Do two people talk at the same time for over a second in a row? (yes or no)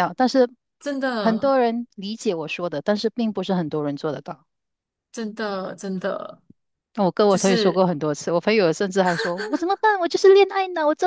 no